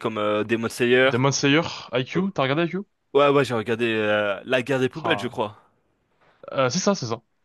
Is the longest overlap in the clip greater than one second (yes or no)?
no